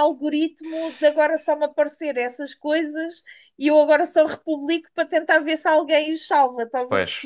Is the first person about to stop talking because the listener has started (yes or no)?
yes